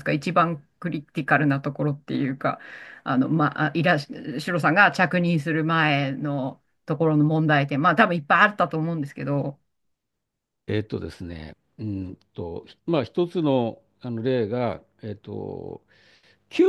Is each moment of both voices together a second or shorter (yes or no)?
yes